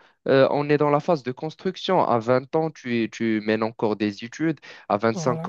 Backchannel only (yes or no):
yes